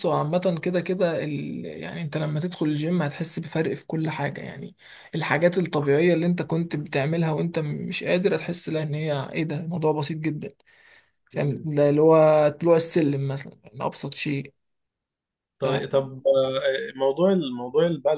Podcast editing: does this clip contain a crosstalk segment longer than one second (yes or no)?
no